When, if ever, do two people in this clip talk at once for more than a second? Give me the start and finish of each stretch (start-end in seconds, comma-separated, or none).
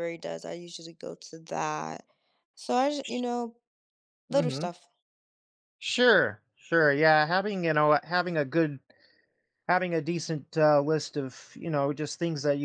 none